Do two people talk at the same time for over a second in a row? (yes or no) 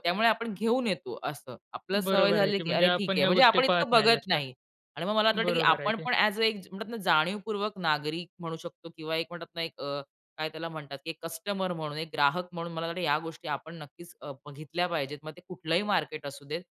yes